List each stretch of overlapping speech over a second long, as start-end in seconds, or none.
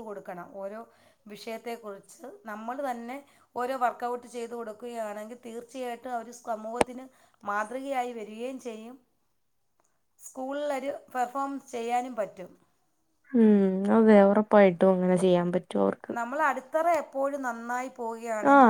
none